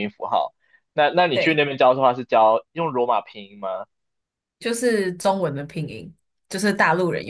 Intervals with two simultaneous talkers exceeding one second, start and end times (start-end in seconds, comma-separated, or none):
none